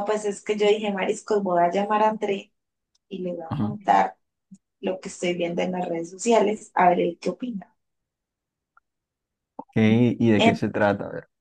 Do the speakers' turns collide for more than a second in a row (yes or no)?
no